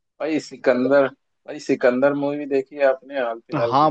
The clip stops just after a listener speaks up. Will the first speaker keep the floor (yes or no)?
no